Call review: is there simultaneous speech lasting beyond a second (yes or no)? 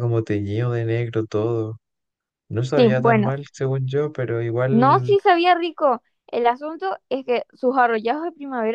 no